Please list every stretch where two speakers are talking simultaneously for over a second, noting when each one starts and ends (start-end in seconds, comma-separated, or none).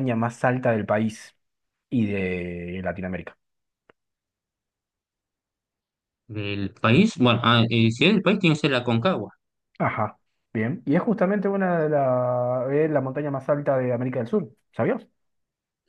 none